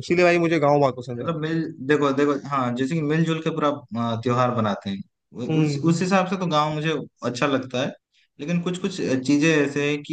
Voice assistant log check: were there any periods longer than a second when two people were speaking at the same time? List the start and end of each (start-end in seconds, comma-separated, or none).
none